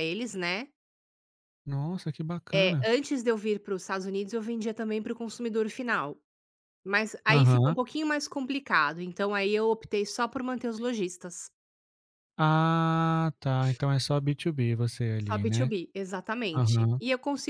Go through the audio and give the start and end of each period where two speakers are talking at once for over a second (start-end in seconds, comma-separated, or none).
none